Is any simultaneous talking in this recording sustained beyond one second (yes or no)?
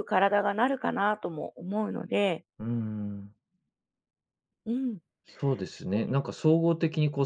no